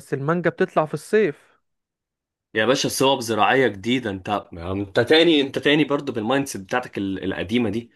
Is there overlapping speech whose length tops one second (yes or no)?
no